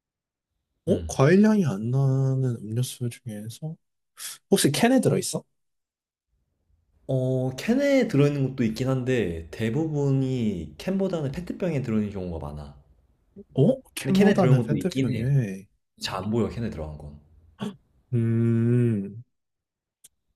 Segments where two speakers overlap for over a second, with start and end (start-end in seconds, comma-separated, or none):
14.0-15.2